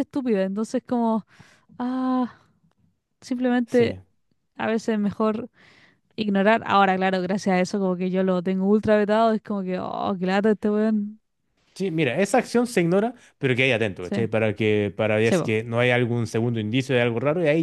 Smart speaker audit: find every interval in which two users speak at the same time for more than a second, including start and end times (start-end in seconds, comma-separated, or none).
none